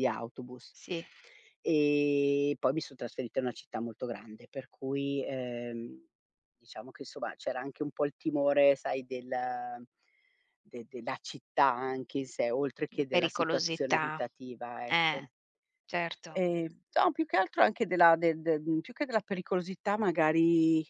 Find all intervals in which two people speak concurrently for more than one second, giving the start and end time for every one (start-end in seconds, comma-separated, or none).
12.9-14.2